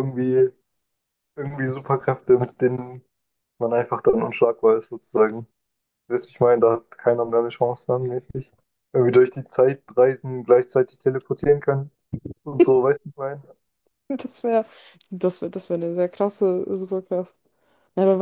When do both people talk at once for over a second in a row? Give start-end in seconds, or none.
none